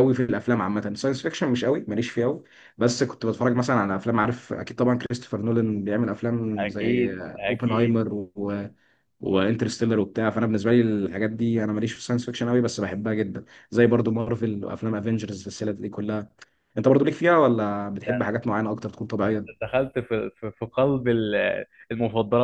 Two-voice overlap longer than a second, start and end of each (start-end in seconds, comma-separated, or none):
6.6-8.0